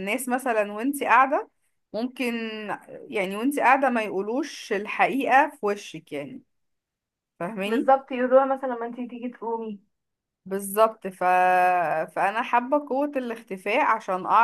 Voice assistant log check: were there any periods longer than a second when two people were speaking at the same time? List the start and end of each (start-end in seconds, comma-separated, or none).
none